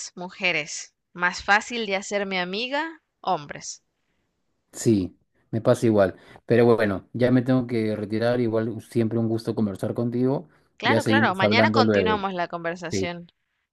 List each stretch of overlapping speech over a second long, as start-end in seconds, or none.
10.8-12.2